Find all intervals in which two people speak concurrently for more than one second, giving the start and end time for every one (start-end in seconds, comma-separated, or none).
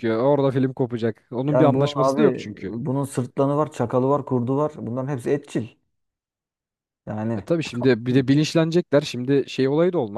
1.5-2.7